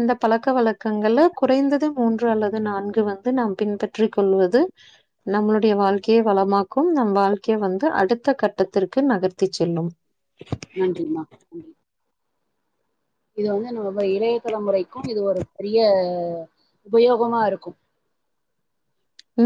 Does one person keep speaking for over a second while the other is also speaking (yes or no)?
no